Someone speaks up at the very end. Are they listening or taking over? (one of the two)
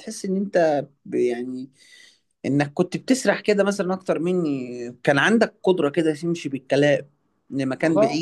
listening